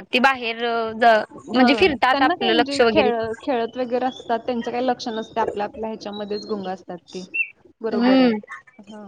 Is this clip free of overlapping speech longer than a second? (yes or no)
no